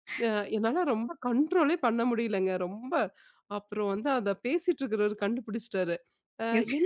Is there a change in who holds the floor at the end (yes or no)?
no